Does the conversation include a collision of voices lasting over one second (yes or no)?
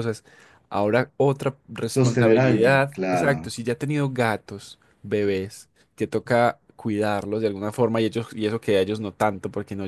yes